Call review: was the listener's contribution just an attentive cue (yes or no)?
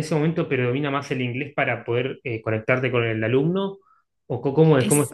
no